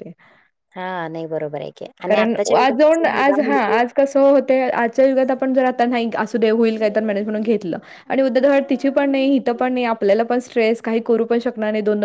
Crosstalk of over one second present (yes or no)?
yes